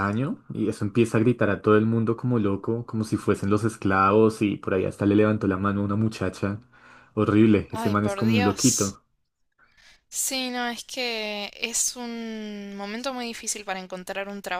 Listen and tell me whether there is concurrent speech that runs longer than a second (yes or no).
yes